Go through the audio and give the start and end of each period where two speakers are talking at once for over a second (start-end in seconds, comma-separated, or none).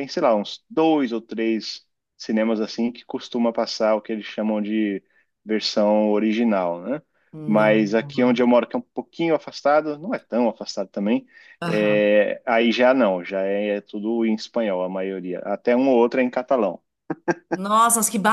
none